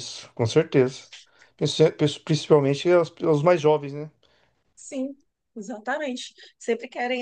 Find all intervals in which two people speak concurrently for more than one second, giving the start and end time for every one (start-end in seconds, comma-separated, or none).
none